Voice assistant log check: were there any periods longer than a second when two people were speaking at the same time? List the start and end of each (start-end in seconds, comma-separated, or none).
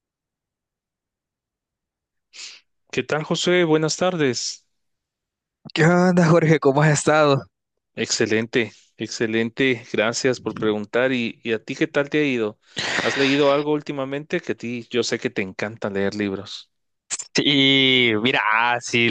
none